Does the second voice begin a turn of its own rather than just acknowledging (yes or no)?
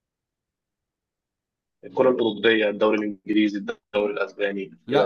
yes